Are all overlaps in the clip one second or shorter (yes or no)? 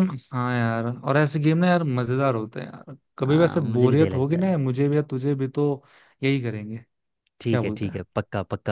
no